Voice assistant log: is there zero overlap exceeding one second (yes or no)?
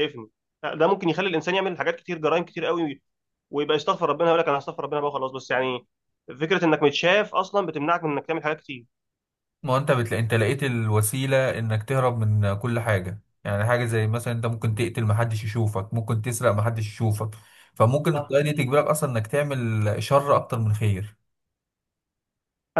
yes